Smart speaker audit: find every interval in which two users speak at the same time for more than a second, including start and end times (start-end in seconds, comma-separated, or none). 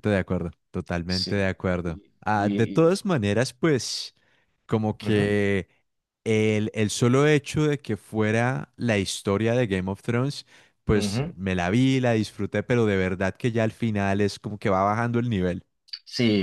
1.1-3.0